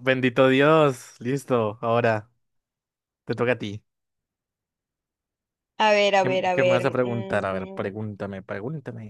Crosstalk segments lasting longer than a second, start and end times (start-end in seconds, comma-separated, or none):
6.2-8.0